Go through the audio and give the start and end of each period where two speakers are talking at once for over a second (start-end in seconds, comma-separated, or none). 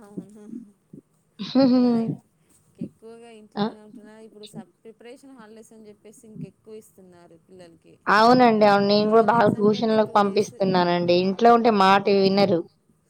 9.0-10.5